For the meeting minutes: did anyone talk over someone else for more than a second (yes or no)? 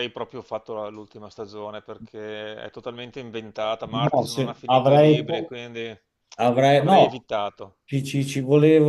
yes